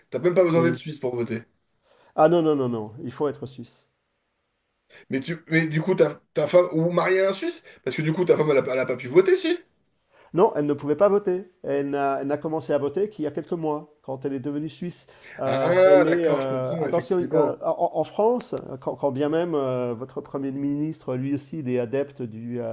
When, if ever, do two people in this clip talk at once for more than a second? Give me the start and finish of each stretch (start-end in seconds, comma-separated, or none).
15.4-17.6